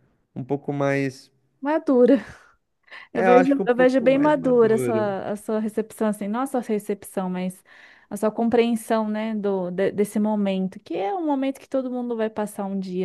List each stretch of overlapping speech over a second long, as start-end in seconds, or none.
3.2-5.0